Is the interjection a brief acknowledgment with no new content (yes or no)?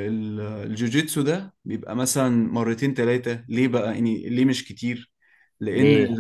yes